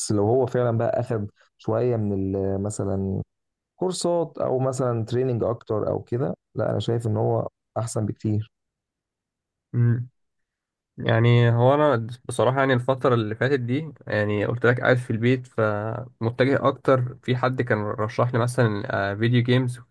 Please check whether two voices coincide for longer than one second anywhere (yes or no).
no